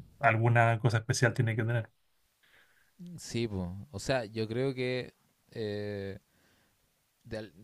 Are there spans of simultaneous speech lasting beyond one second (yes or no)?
no